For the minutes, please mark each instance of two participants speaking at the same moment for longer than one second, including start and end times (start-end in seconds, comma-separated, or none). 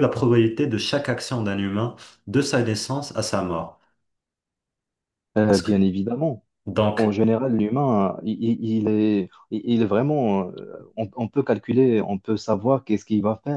none